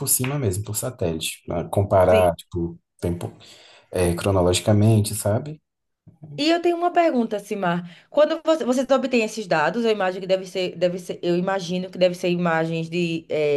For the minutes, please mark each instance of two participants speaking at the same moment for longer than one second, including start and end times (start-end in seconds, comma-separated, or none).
none